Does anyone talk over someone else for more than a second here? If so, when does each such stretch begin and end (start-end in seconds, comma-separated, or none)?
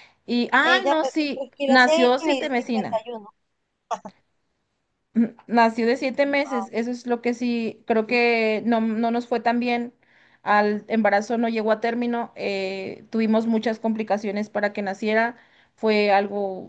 0.6-3.0